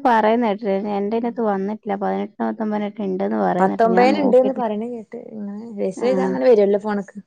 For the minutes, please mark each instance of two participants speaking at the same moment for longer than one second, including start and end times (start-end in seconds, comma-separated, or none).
none